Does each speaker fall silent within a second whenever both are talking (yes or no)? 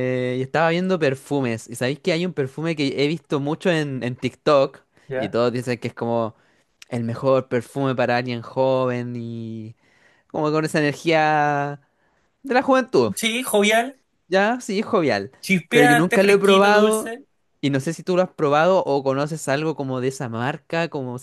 no